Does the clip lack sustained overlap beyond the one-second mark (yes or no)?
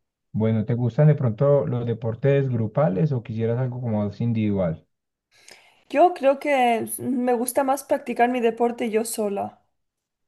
yes